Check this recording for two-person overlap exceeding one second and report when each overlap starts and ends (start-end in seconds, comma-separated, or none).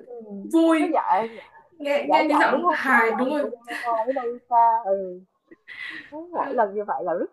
2.0-3.5